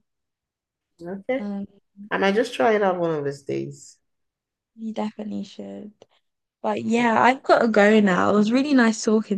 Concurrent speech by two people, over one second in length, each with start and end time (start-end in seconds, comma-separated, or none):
none